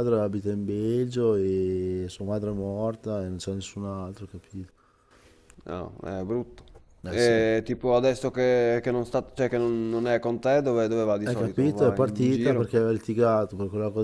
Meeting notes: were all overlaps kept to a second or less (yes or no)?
no